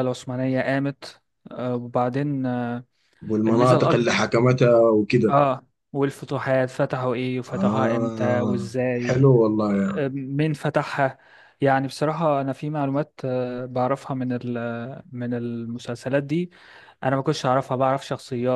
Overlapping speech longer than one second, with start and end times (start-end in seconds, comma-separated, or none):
7.5-9.2